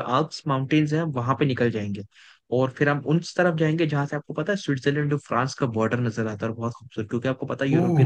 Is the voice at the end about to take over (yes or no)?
no